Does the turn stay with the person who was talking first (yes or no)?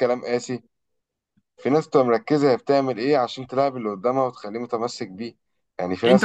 no